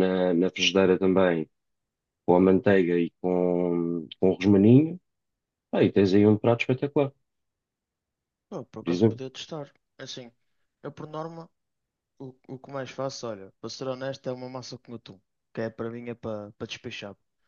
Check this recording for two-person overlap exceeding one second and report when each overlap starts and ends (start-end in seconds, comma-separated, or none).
none